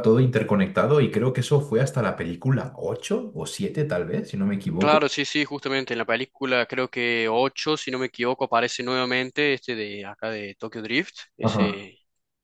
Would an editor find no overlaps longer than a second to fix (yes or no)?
yes